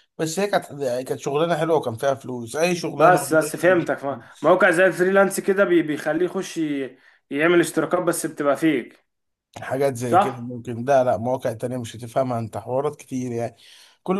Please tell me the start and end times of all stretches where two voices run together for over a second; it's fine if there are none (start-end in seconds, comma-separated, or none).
3.0-4.6